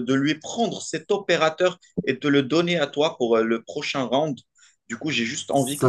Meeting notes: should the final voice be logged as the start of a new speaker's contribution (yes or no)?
yes